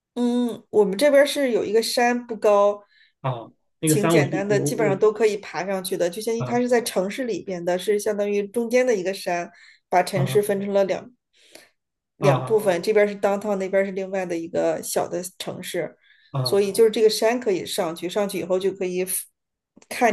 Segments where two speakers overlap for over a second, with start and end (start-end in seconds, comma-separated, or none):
3.9-5.1